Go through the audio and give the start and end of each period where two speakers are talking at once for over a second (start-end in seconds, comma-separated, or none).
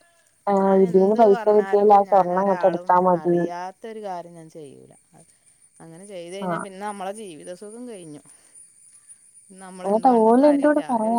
0.8-3.3